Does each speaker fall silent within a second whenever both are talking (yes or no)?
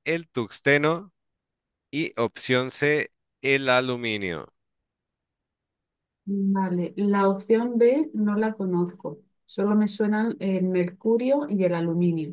yes